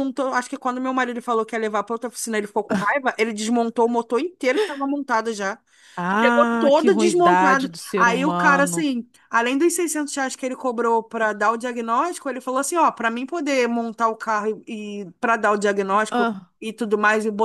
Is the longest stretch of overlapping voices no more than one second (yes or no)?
no